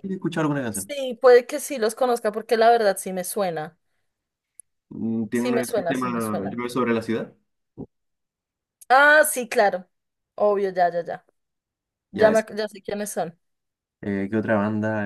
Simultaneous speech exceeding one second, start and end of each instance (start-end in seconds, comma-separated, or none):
5.3-6.6